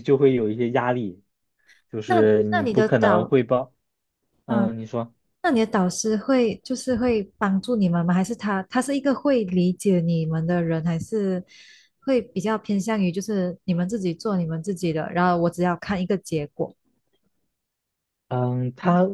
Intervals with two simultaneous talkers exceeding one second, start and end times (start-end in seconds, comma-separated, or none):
2.1-3.3